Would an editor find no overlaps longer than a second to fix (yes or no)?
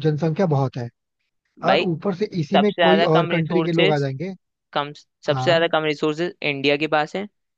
no